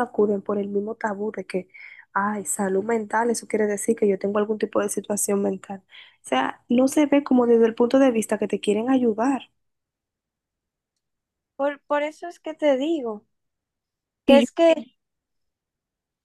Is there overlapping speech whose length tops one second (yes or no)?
no